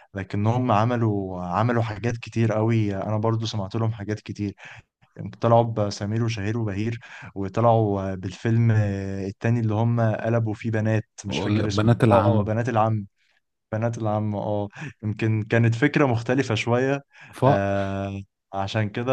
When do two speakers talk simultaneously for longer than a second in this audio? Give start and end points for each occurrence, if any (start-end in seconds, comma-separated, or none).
11.3-12.5